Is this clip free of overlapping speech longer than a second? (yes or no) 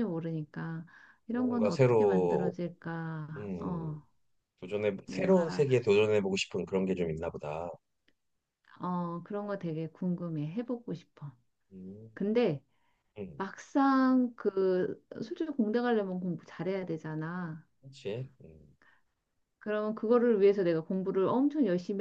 no